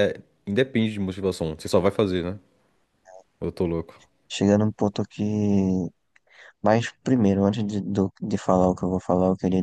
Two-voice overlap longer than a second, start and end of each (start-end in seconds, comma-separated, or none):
none